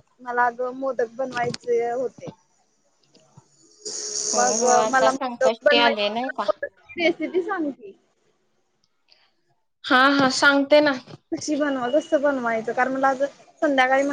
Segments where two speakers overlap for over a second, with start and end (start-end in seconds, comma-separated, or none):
4.4-6.4